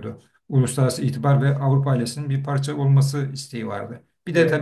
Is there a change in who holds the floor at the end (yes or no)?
no